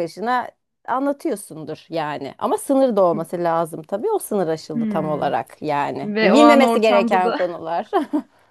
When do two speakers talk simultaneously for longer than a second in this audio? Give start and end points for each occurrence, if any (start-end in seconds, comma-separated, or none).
6.0-7.4